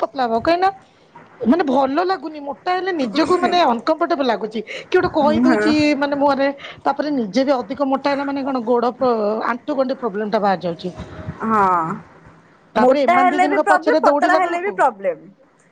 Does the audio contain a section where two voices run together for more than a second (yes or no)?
yes